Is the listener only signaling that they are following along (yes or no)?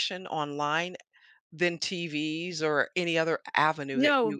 no